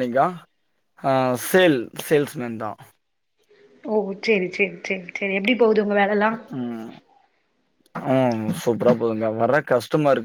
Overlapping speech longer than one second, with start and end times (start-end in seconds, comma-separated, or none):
none